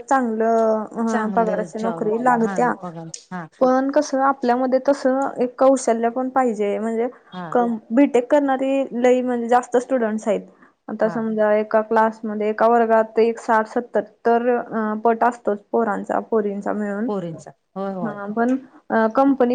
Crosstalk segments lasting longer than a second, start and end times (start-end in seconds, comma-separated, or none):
1.1-2.7